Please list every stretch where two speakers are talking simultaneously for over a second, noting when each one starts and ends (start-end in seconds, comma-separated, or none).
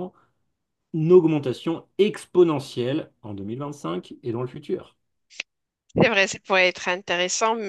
none